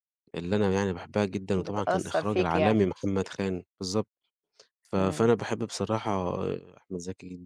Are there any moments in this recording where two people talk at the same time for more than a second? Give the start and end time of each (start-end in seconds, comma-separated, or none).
1.6-2.8